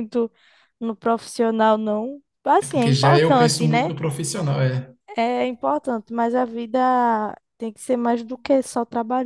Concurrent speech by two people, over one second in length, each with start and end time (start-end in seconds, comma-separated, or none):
2.6-3.9